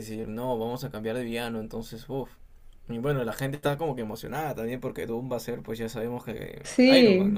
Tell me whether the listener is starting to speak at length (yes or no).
yes